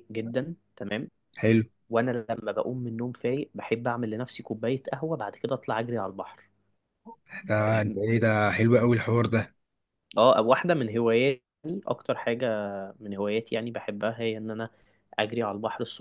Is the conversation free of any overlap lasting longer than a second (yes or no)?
yes